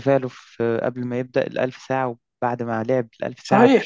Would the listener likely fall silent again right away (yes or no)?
no